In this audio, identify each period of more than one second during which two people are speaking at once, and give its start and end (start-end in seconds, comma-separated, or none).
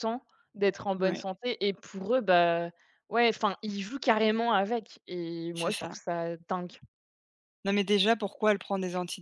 none